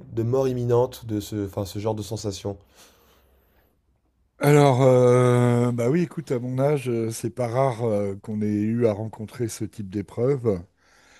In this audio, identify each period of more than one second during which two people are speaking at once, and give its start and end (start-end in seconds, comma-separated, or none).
none